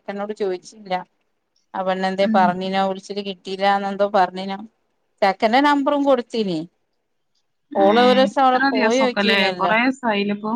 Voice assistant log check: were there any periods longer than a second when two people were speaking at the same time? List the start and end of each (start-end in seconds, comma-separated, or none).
7.9-9.7